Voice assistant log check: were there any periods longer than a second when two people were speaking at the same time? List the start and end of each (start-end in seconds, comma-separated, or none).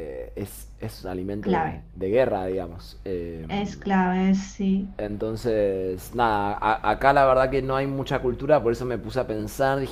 none